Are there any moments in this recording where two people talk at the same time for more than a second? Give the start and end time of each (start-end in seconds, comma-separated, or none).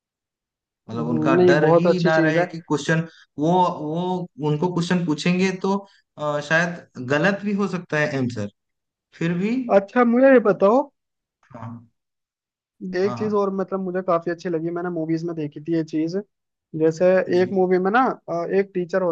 0.9-2.5